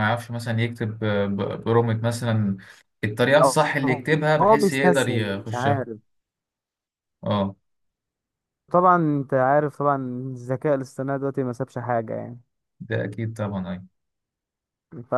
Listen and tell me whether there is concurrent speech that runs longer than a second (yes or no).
yes